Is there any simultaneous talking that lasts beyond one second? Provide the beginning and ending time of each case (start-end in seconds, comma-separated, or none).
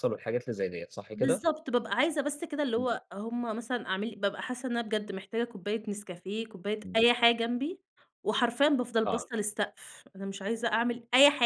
none